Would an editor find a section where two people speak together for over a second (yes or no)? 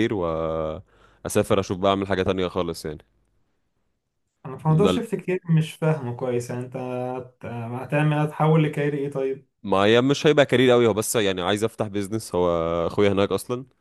no